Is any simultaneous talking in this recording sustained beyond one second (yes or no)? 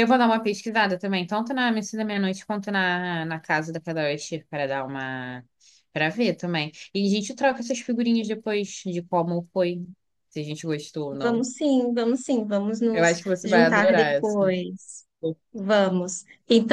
yes